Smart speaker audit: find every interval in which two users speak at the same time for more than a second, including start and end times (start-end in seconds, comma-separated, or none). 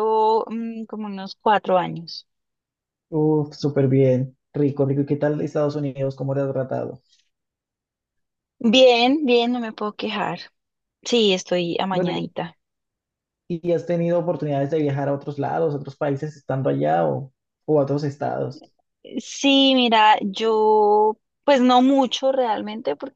none